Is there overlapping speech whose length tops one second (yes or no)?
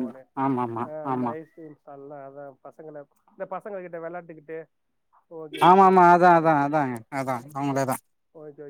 no